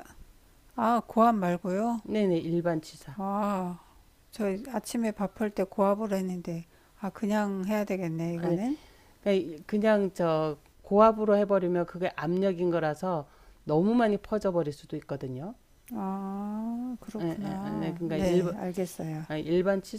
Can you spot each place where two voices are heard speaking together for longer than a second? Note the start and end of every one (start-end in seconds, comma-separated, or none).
17.2-18.5